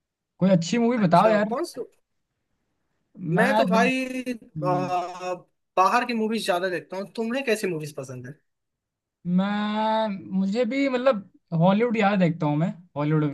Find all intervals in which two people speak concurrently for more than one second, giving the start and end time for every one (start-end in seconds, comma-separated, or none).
none